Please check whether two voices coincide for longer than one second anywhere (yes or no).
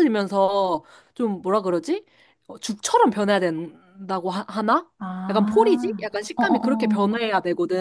yes